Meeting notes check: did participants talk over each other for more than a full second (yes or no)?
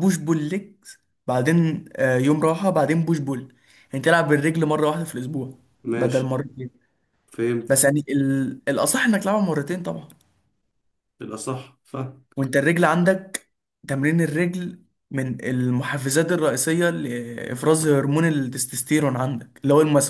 no